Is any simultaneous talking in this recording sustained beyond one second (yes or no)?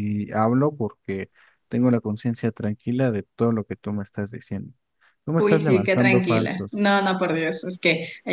yes